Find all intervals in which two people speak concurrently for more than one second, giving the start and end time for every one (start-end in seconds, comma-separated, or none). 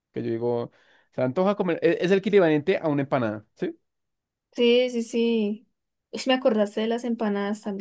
none